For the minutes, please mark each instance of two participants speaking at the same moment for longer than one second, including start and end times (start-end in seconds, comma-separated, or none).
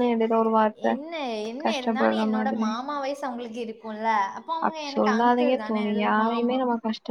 4.7-6.6